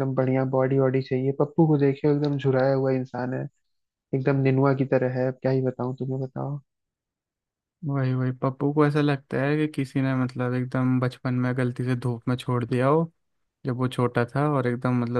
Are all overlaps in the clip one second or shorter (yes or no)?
yes